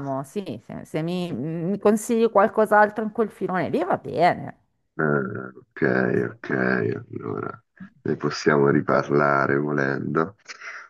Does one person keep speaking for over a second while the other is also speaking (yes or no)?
no